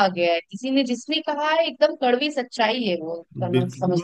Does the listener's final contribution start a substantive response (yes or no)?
yes